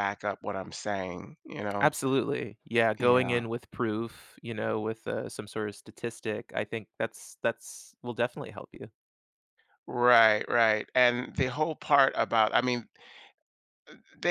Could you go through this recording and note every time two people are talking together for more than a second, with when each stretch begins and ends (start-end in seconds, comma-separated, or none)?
none